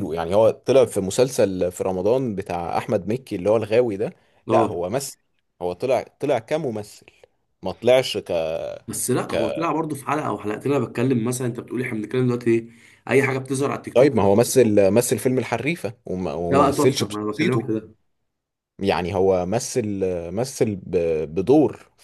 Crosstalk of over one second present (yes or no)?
yes